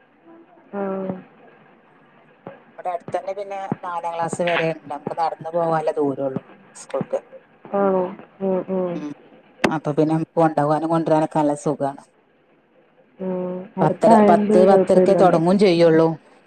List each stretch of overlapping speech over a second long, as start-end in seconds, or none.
13.8-15.4